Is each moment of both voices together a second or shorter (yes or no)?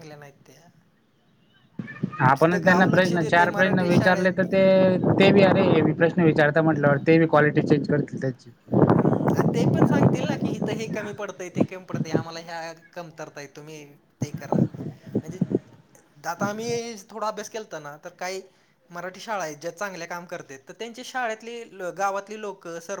no